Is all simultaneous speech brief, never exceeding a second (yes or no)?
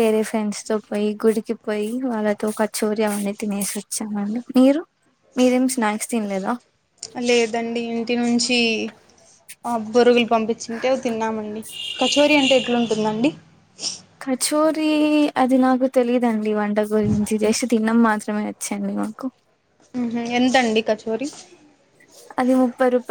yes